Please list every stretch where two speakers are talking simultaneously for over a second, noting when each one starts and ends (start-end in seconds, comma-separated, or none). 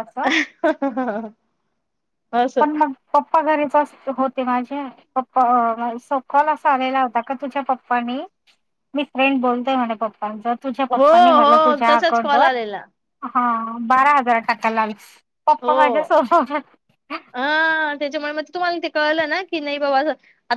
10.9-12.5